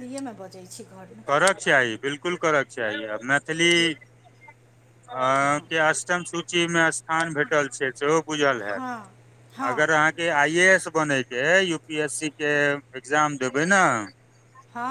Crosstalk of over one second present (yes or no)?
no